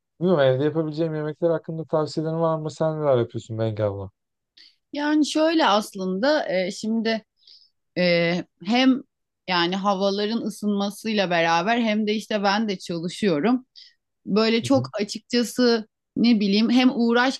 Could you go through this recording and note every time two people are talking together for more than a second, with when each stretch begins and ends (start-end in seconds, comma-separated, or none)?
none